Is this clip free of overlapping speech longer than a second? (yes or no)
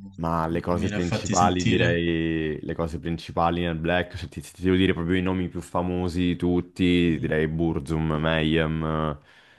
no